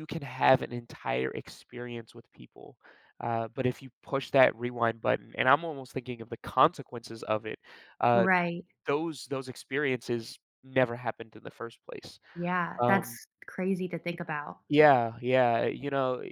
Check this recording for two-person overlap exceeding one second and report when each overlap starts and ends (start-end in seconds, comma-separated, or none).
none